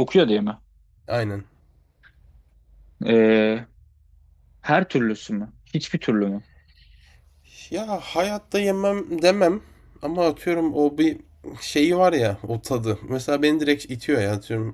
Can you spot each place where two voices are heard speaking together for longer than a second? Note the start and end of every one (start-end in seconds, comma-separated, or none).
none